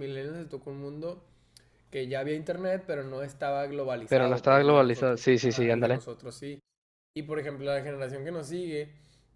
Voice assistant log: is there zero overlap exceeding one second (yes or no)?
no